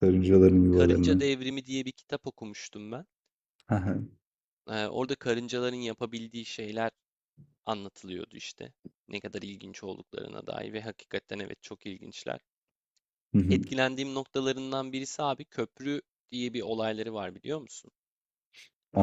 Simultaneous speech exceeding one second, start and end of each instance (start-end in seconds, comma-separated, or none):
none